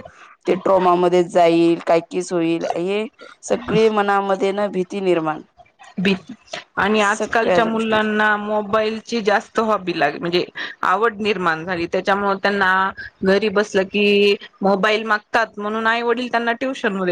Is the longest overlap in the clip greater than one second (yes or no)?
yes